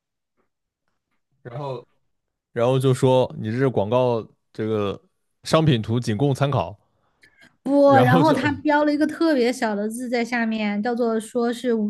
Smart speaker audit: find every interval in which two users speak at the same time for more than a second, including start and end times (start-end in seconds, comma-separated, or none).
none